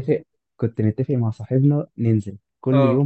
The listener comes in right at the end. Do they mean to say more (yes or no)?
no